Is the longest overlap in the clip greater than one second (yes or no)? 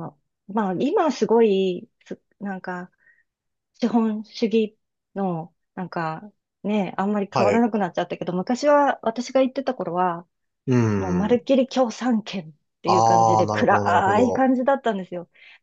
yes